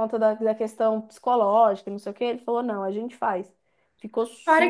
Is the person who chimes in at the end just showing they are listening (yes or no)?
no